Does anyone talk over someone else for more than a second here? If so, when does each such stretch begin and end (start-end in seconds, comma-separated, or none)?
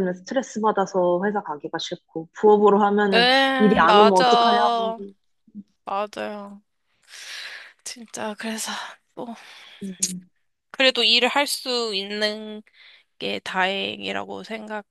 3.1-4.8